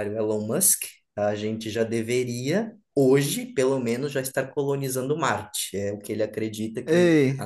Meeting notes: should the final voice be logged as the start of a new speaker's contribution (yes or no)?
no